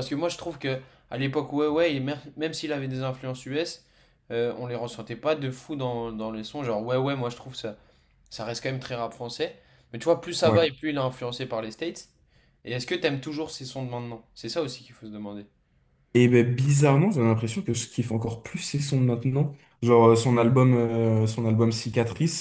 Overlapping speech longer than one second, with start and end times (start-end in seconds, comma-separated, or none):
none